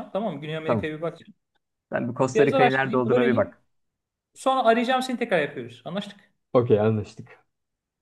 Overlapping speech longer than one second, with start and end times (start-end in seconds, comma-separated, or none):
2.3-3.6